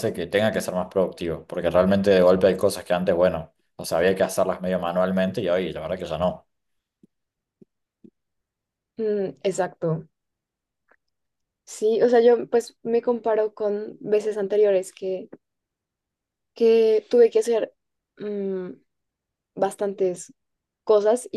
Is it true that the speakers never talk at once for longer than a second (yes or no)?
yes